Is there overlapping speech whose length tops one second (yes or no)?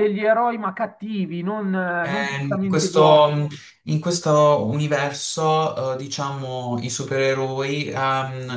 yes